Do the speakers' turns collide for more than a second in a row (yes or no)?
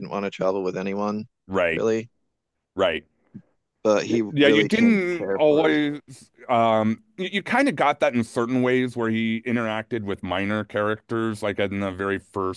yes